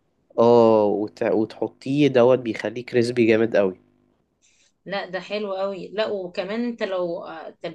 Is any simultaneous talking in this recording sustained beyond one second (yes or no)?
no